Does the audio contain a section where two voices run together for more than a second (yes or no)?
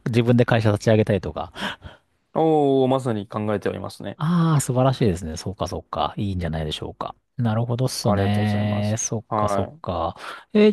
yes